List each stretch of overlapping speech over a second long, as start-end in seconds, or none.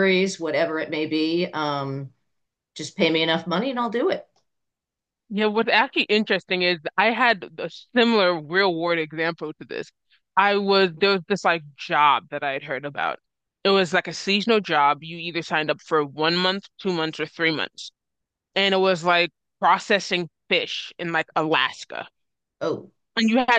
none